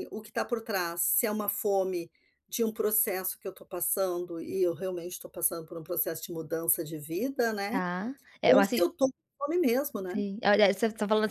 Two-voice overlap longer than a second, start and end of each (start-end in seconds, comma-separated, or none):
none